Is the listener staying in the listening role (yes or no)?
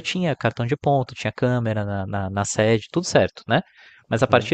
yes